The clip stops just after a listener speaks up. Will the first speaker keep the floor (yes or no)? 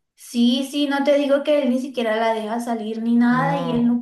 yes